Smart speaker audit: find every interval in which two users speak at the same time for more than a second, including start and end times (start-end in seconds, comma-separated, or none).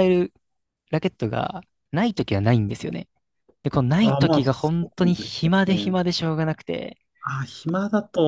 4.0-5.9